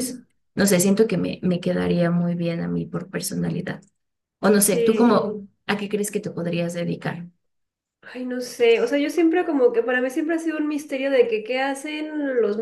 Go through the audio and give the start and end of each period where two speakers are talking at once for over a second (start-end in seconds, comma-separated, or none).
none